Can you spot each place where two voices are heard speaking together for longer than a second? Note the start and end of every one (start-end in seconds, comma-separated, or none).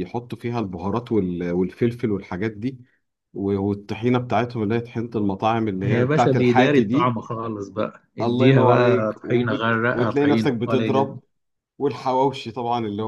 5.8-7.2, 8.2-11.2